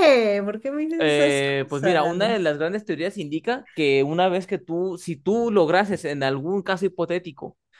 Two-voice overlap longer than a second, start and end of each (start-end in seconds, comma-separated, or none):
1.0-2.5